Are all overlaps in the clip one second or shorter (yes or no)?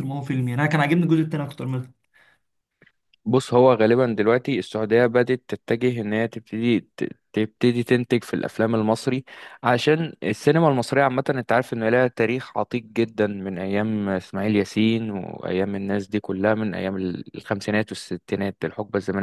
yes